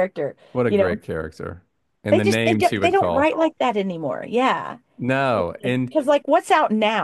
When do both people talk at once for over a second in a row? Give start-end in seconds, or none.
2.1-3.4